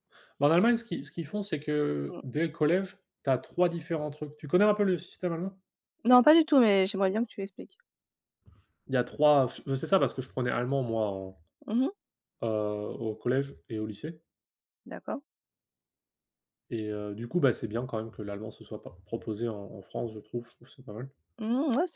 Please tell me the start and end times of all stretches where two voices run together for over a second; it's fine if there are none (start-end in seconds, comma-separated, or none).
none